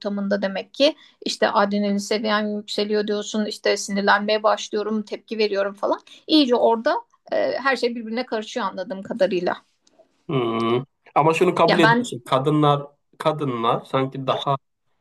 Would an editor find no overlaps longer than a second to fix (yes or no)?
yes